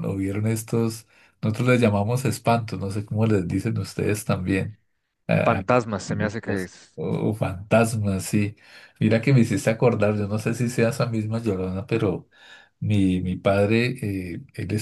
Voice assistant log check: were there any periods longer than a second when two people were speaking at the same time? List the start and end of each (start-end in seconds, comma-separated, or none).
none